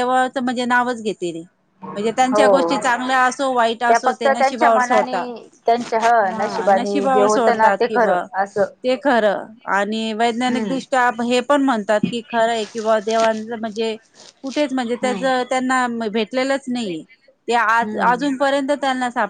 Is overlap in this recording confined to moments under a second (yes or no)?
no